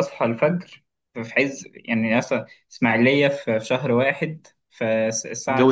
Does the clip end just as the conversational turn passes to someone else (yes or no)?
no